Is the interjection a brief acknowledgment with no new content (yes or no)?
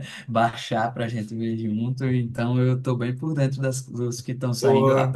yes